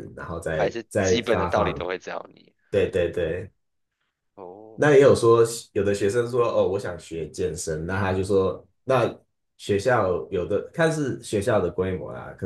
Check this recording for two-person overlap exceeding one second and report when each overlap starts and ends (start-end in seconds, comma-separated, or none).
0.6-1.8